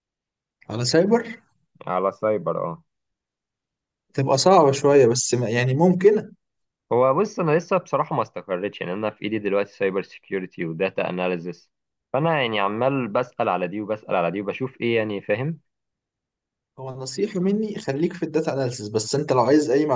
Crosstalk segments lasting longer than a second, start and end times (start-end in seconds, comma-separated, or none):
none